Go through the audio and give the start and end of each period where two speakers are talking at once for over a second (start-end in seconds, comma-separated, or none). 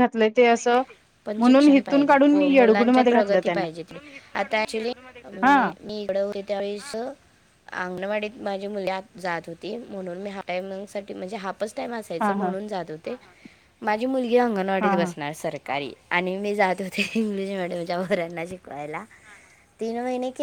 1.4-3.7